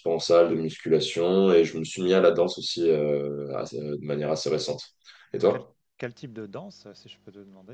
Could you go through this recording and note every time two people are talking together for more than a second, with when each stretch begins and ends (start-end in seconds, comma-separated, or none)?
none